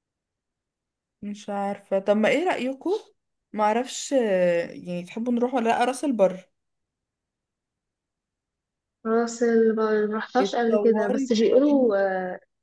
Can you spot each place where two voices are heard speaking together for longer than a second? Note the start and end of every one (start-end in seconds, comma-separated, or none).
10.4-12.1